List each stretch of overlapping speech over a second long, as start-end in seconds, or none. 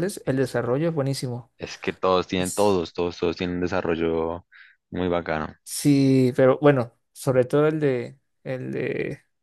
none